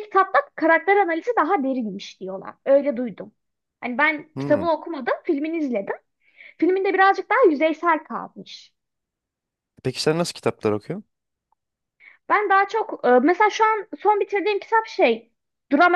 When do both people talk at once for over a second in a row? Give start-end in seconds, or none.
none